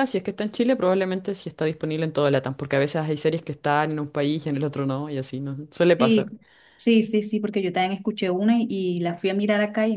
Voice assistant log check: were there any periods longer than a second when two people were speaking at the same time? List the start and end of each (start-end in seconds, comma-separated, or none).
none